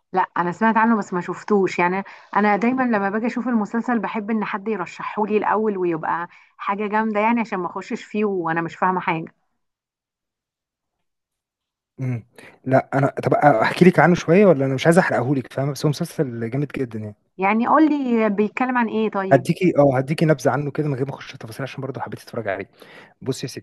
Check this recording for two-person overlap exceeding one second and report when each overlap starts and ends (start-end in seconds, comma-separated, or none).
none